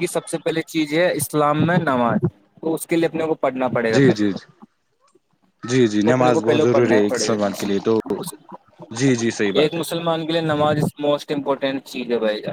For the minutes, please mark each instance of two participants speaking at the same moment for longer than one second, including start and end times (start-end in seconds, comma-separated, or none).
6.0-7.9